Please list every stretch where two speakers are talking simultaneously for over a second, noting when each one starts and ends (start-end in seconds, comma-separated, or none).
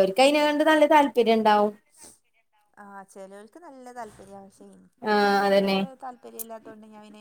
none